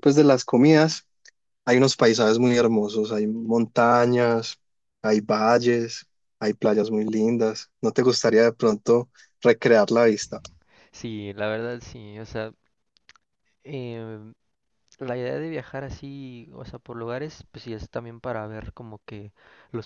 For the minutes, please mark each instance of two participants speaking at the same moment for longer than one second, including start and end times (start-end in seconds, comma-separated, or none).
none